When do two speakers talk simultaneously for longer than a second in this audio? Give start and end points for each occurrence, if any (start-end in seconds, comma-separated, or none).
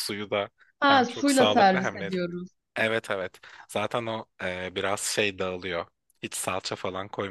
0.9-2.1